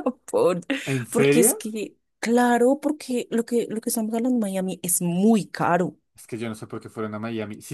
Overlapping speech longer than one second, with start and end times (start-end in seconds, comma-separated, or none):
none